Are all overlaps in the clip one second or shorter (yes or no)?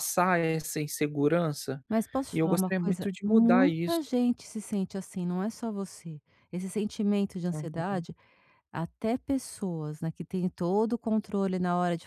no